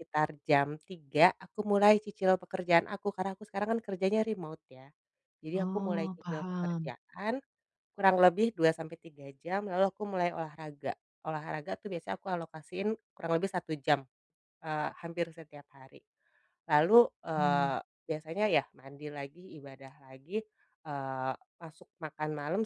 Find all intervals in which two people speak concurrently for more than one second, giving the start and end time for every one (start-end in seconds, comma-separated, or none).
5.5-6.9